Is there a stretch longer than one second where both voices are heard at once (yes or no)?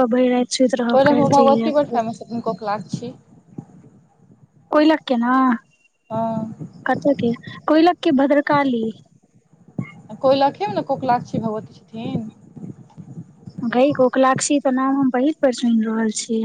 yes